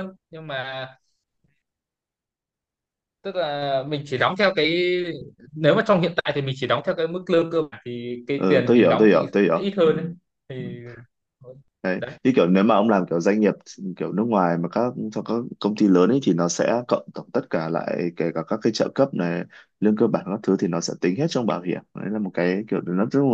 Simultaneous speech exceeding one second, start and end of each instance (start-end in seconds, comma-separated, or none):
8.4-9.9